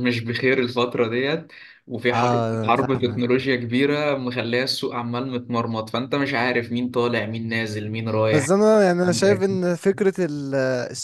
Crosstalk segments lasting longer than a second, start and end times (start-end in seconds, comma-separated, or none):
2.1-3.5